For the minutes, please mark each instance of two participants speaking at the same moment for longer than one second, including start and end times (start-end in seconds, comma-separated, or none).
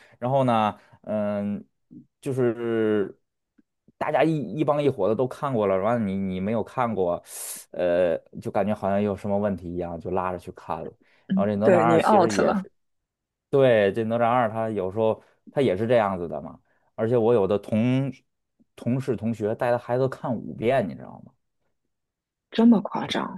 11.3-12.7